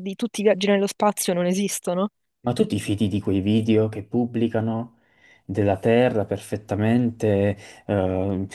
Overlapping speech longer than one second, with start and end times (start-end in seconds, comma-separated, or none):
none